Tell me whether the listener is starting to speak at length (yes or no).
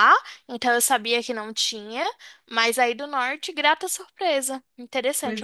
yes